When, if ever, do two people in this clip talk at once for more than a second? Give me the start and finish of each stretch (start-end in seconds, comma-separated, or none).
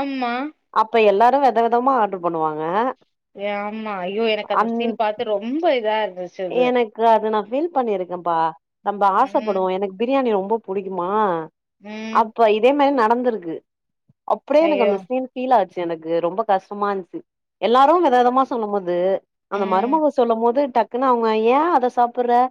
none